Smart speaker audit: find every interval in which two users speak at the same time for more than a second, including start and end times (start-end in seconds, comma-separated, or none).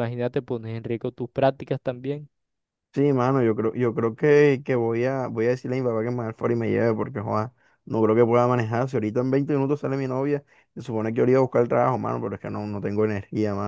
none